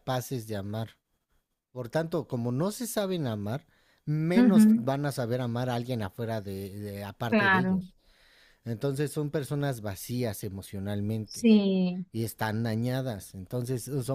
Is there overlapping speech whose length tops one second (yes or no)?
no